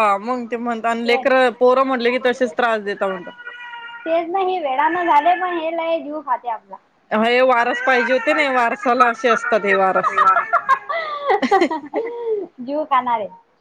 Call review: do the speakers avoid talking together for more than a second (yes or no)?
yes